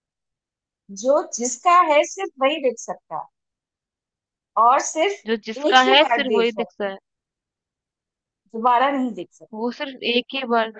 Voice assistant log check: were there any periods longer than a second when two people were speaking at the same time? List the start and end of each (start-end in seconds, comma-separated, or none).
5.3-6.9